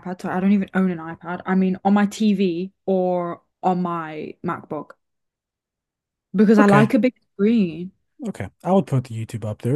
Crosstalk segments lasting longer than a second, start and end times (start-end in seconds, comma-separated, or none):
none